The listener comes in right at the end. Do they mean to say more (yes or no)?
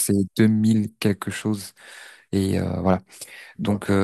no